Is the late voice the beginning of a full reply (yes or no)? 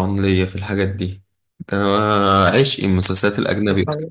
no